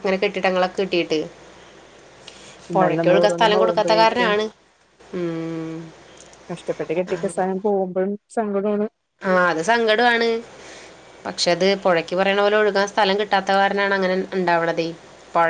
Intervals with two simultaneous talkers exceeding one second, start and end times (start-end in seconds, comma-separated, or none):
2.7-4.3